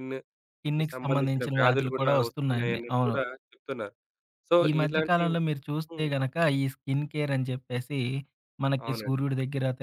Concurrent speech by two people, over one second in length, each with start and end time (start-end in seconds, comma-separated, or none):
0.6-3.1